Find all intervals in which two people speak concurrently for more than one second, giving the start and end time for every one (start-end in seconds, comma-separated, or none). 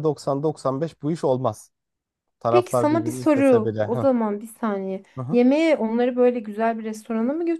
2.5-4.1